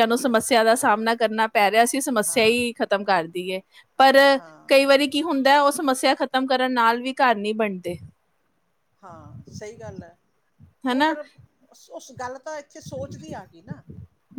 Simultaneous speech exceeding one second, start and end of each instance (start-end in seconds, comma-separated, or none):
none